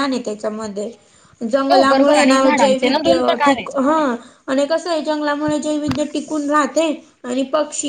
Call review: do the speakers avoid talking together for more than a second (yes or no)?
no